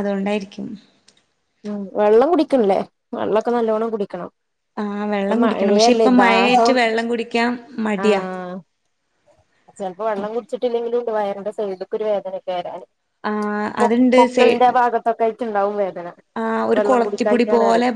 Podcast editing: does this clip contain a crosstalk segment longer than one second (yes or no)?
yes